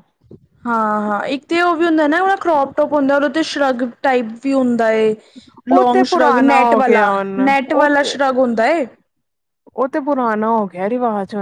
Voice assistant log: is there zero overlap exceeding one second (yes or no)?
no